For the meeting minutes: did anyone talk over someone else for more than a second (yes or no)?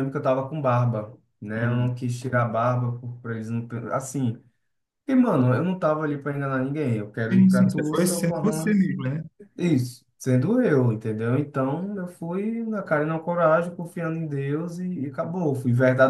yes